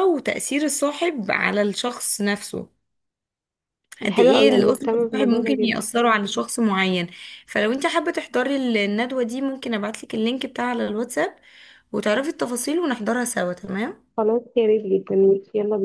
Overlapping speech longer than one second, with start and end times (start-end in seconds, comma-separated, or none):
4.0-5.8